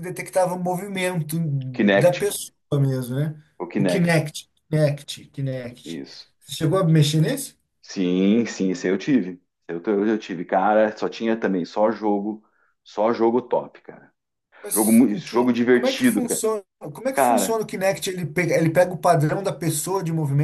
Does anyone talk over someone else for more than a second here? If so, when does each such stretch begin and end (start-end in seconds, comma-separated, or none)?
14.7-16.4